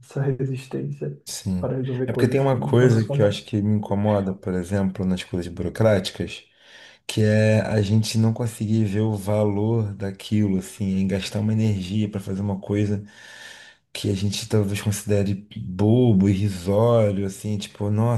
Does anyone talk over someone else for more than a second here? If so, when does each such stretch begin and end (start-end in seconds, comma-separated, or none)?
1.6-3.5